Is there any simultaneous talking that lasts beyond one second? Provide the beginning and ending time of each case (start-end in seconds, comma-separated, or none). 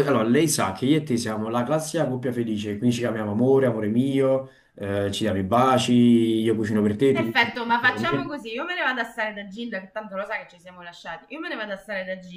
7.1-8.4